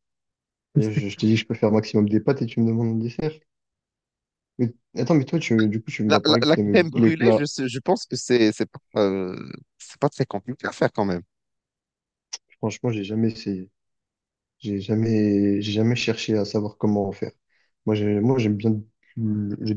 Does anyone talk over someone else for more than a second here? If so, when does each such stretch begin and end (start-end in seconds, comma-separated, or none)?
6.1-7.5